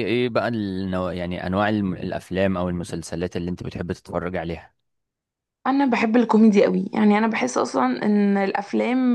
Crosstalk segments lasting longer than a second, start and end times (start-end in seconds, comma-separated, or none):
none